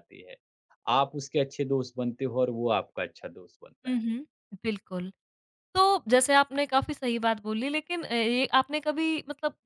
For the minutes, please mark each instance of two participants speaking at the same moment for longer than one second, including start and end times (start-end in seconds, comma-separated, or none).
none